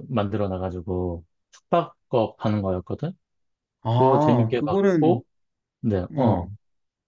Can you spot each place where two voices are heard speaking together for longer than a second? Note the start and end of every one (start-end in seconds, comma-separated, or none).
3.9-5.2